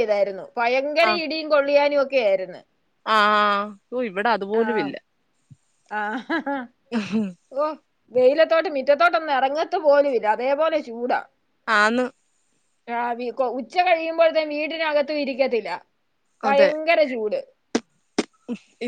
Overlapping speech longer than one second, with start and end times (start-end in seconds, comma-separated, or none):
none